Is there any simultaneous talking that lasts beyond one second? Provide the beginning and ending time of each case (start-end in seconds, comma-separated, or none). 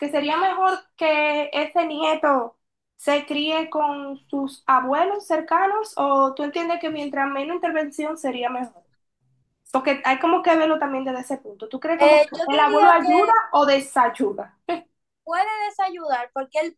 12.0-13.3